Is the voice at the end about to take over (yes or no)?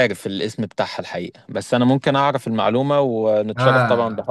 yes